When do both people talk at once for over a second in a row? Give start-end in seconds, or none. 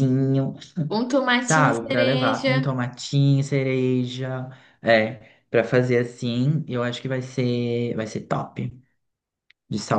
1.4-2.7